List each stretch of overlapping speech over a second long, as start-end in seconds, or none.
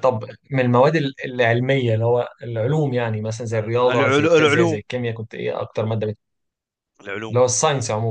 3.5-4.8